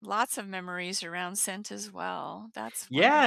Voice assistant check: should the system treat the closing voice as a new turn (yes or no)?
yes